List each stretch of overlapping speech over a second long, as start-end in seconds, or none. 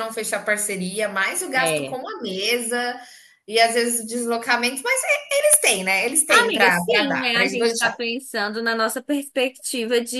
6.3-7.9